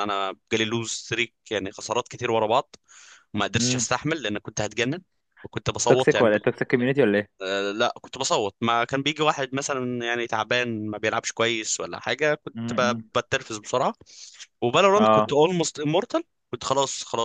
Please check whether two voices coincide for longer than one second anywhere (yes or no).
no